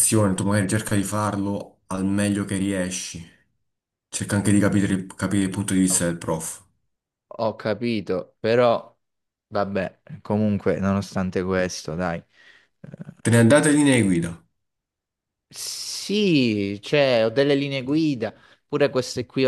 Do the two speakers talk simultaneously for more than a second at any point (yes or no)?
no